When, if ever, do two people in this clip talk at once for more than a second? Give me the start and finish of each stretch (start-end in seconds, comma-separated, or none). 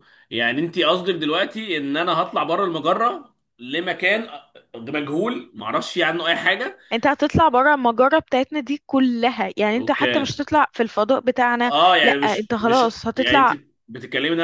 11.6-13.6